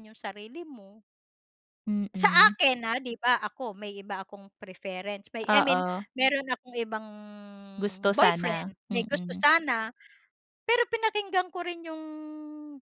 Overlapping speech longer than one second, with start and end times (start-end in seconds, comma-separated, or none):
8.2-9.4